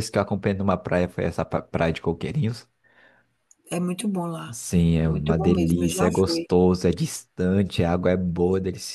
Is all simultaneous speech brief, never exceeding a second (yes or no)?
no